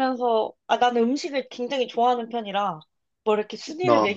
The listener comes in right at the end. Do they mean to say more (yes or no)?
no